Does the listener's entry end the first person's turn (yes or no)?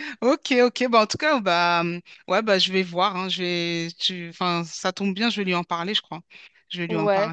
yes